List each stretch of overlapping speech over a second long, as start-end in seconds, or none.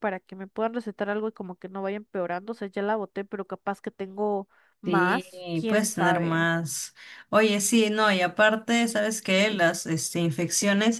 4.8-6.5